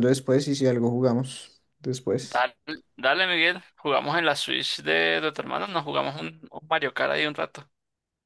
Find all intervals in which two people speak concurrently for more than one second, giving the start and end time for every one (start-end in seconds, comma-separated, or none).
none